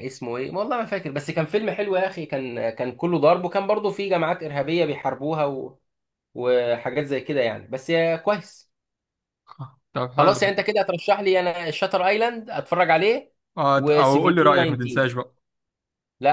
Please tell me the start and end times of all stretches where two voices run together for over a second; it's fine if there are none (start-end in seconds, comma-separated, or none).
13.8-15.0